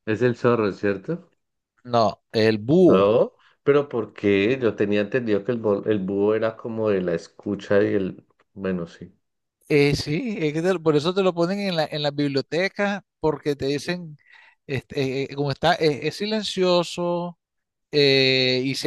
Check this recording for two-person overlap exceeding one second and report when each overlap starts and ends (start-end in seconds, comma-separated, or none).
none